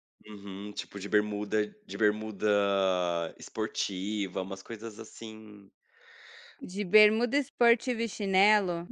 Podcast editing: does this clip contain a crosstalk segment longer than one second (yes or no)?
no